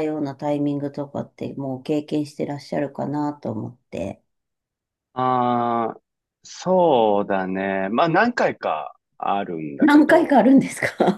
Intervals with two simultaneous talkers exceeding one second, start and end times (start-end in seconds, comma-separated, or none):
none